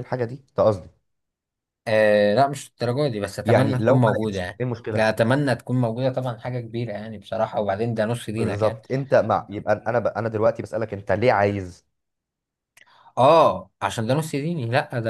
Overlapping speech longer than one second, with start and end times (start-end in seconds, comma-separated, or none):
3.4-5.1